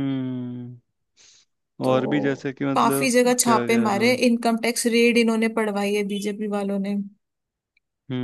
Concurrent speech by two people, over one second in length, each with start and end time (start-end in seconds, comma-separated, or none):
1.9-4.2